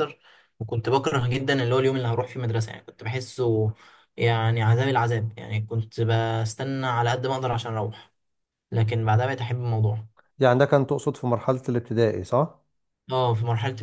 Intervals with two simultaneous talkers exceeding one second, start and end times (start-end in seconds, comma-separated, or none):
none